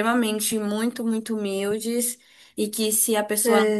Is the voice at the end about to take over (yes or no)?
no